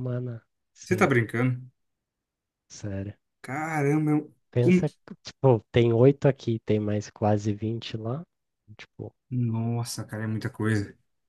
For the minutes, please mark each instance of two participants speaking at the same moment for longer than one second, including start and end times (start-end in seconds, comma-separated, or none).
none